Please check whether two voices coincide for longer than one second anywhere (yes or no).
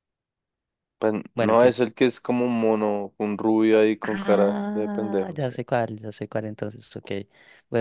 yes